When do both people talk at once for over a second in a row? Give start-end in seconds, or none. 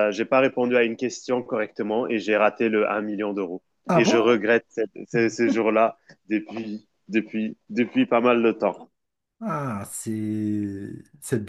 none